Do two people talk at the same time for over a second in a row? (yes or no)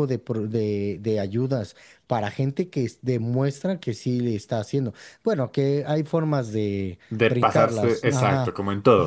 yes